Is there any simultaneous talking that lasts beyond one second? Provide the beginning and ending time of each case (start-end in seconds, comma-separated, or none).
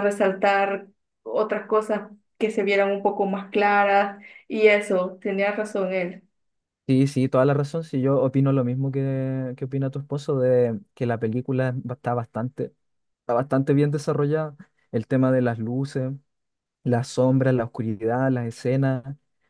none